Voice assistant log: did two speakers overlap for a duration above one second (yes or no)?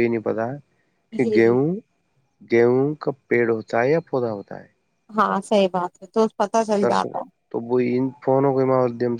no